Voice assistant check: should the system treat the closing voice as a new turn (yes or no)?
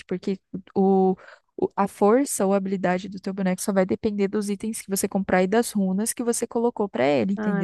yes